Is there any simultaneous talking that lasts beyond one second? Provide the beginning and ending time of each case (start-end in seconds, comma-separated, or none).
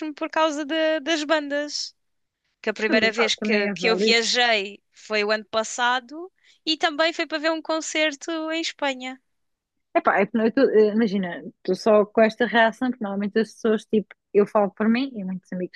2.9-4.2